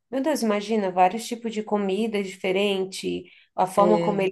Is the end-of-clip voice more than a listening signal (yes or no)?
no